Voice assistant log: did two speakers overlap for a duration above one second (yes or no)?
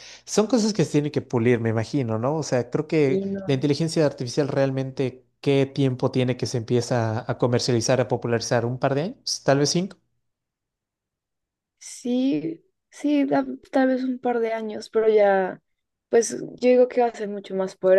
no